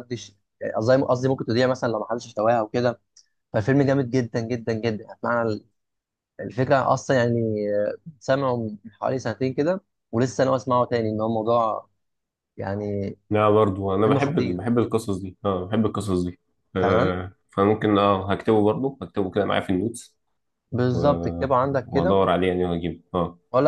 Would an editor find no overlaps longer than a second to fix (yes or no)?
no